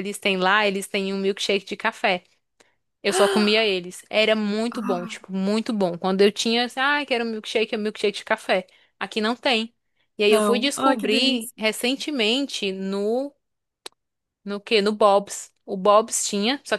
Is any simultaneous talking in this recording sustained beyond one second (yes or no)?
yes